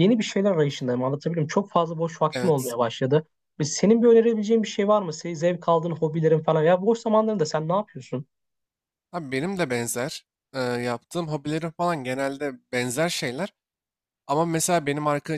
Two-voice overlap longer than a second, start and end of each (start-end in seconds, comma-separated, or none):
none